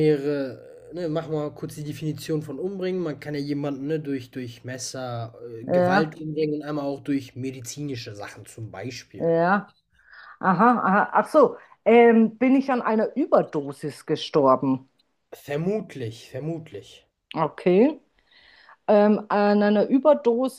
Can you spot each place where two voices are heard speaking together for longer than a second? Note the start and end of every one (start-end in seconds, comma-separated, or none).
none